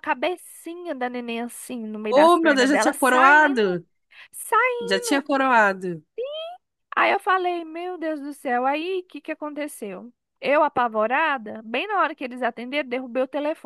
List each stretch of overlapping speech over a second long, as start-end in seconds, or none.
2.0-3.8